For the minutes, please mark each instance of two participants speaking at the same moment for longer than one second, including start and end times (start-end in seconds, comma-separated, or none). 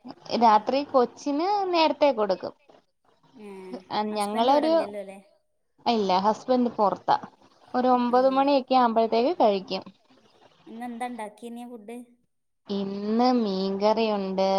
none